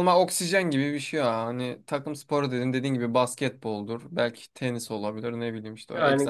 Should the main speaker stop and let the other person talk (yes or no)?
yes